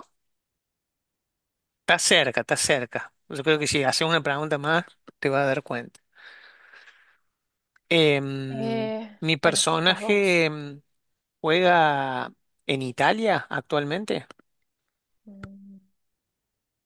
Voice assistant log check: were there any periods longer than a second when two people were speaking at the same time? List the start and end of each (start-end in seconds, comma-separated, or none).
8.5-10.5